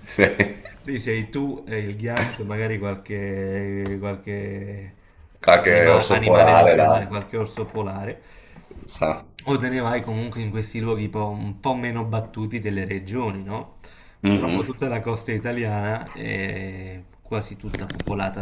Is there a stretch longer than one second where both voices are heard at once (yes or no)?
yes